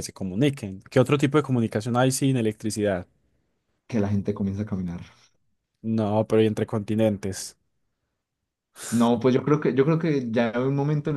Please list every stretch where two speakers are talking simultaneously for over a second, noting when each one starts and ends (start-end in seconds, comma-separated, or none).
none